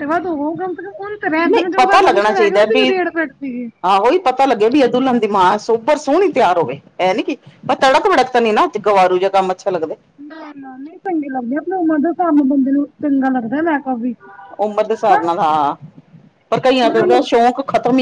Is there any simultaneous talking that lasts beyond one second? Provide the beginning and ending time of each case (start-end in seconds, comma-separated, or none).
1.5-2.9